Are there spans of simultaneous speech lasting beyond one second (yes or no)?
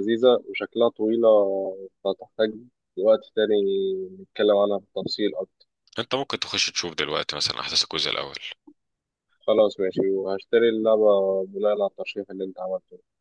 no